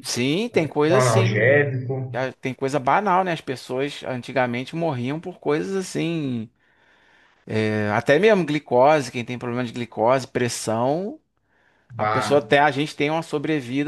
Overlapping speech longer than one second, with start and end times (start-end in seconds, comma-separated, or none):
0.5-2.2